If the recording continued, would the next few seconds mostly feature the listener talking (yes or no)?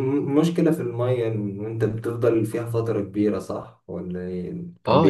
yes